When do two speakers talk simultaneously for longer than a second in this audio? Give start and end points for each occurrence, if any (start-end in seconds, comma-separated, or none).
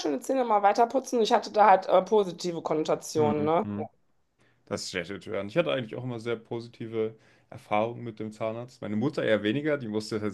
none